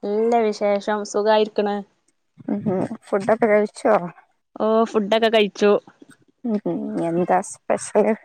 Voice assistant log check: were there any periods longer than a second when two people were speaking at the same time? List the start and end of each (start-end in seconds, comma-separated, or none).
none